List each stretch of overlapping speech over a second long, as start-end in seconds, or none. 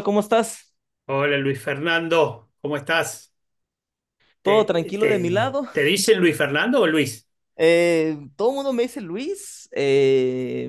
4.4-5.7